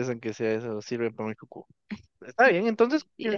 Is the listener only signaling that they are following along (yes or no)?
yes